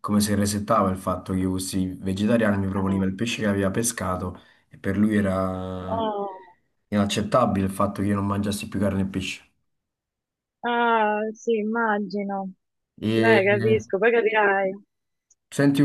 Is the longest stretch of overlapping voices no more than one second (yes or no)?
yes